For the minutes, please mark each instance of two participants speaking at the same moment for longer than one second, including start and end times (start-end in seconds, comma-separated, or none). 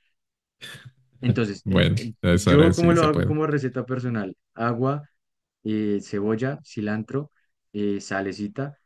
1.6-3.4